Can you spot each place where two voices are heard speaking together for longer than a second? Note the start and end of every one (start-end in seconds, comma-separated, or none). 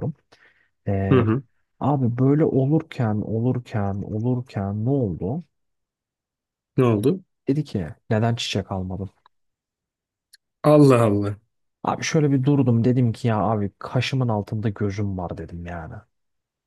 none